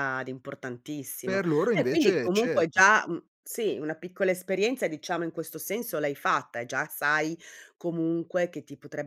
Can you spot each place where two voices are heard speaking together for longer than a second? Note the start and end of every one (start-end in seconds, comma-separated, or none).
1.2-2.8